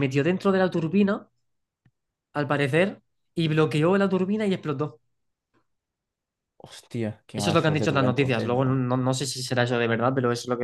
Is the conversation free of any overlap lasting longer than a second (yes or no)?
no